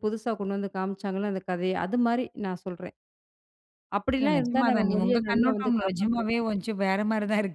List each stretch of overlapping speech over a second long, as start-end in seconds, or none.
4.2-6.3